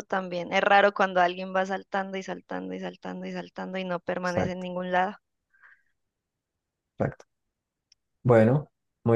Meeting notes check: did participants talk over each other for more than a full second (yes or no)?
no